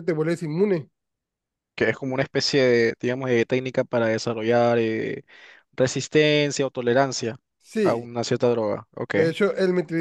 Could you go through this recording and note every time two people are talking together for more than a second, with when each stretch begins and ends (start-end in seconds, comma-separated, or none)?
none